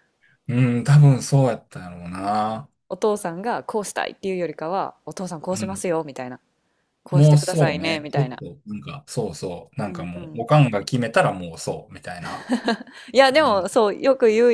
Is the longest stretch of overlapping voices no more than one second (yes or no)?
no